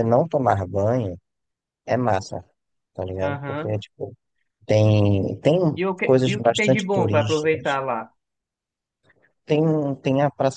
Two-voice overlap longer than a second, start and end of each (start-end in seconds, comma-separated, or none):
6.0-7.7